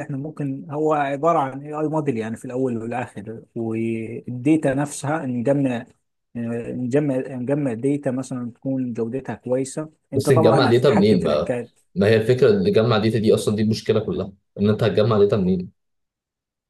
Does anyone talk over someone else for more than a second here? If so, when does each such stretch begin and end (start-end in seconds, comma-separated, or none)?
10.1-11.5